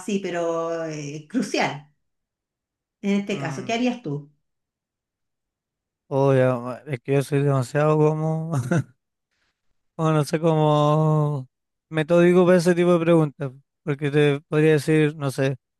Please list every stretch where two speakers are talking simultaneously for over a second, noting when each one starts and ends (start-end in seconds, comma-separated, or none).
none